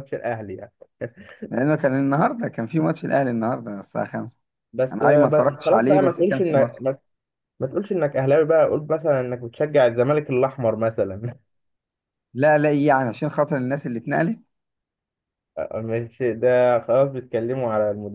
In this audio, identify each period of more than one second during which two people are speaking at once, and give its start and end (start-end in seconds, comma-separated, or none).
4.9-6.8